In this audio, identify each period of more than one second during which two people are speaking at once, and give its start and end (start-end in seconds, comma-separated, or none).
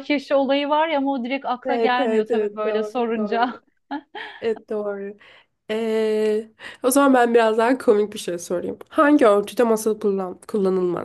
1.6-3.5